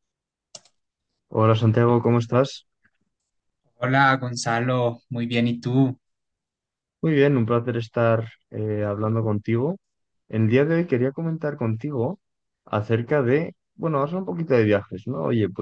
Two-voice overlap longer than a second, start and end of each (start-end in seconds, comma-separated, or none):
none